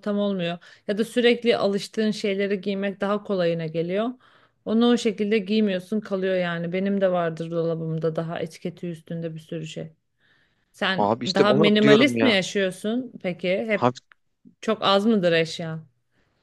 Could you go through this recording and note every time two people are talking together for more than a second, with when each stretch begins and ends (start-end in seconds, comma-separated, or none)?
11.0-12.3